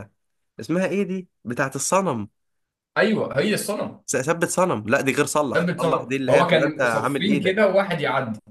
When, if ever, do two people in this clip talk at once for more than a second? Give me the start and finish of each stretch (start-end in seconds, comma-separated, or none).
5.5-7.6